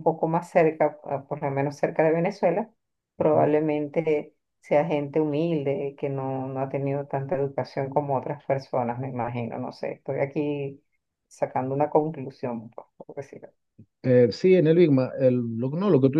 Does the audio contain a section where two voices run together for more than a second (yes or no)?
no